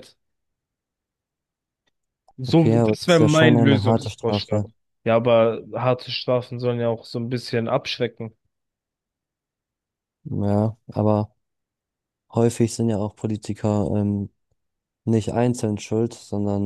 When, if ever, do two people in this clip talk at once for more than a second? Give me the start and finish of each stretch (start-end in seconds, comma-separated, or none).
2.4-4.6